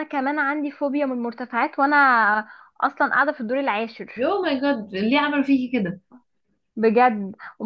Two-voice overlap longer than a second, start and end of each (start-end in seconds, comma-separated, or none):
none